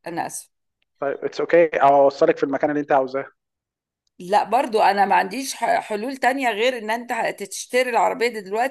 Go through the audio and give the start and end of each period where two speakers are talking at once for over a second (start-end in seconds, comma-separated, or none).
none